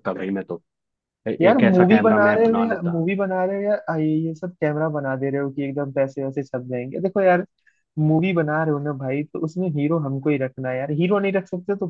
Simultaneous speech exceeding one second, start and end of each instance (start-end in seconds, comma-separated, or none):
1.4-3.0